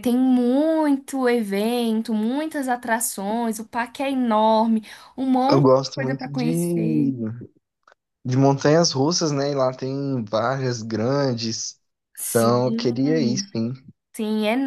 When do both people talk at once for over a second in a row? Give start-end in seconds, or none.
5.5-7.1